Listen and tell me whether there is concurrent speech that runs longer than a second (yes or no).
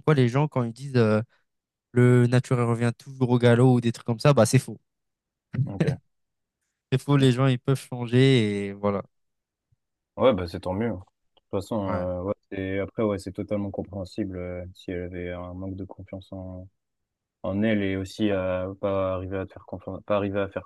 no